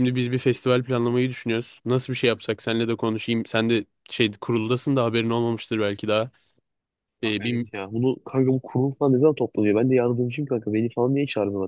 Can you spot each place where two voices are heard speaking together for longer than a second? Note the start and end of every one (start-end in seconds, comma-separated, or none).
none